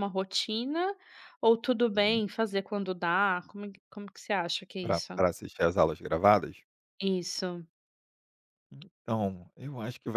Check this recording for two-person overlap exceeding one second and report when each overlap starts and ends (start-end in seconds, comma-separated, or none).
none